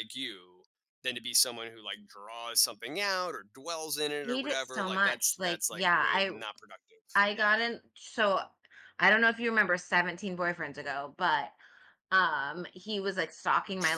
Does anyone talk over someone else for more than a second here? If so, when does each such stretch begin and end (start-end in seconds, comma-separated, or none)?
4.2-6.3